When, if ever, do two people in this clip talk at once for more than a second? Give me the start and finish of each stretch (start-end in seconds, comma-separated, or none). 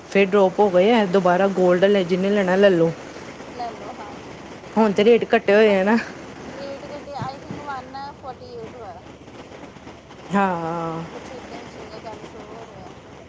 none